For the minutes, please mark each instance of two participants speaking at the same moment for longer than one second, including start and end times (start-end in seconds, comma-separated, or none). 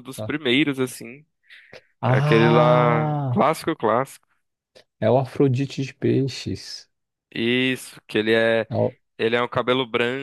2.1-3.5